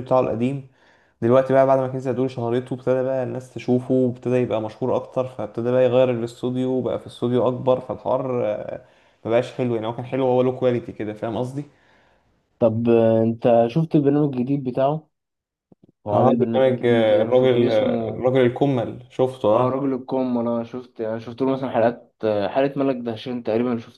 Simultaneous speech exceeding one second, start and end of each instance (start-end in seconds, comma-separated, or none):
16.1-18.2